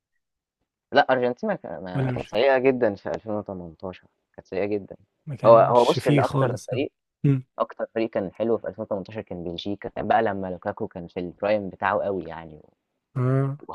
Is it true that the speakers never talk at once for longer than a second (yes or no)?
no